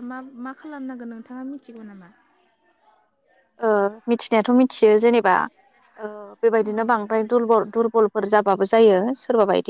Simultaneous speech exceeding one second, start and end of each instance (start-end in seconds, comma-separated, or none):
none